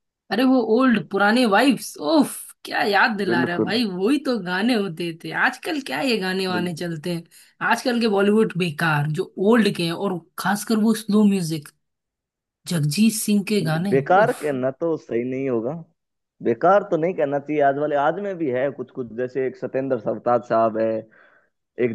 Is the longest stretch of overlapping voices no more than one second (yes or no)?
yes